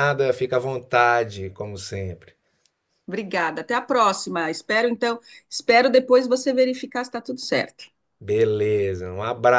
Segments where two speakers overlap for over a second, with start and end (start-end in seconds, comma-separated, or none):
none